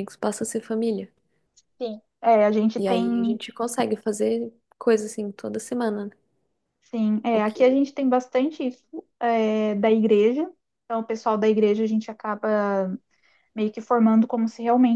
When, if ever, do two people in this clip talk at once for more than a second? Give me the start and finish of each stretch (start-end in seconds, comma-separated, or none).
none